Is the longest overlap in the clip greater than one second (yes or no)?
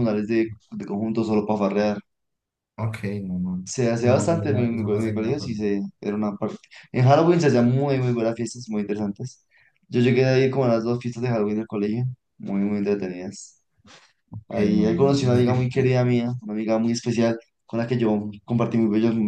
yes